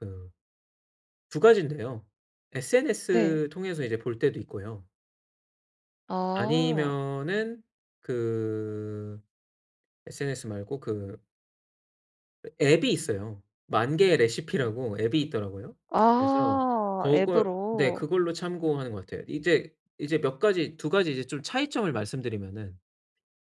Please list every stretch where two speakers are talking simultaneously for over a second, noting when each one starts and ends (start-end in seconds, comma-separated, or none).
16.1-18.1